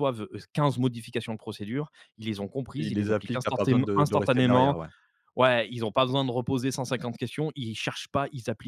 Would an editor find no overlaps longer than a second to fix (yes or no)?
no